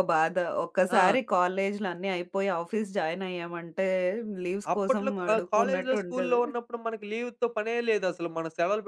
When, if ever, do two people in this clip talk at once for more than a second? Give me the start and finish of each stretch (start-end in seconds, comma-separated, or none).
4.7-6.4